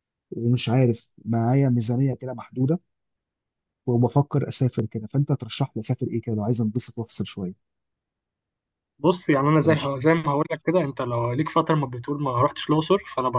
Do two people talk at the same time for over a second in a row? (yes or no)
no